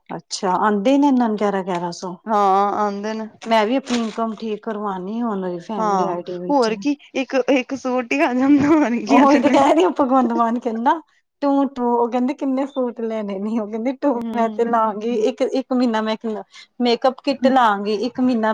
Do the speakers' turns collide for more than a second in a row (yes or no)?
no